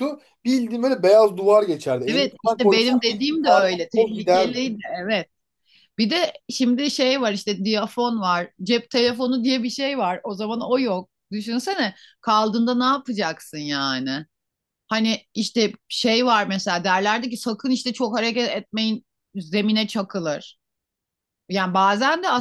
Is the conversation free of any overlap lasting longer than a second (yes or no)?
no